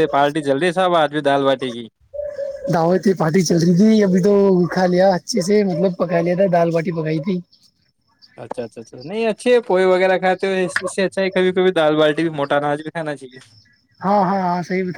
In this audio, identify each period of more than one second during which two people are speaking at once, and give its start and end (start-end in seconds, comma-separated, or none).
none